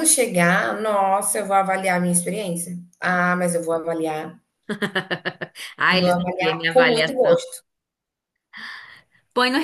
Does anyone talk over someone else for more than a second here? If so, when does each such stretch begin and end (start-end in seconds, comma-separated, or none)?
5.9-7.4